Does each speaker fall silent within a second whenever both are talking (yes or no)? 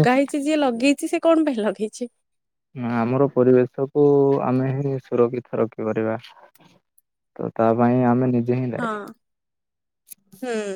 yes